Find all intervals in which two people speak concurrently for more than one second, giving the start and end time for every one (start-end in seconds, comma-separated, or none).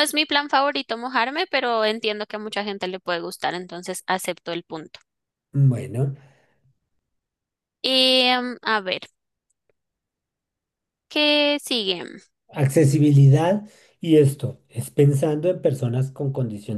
none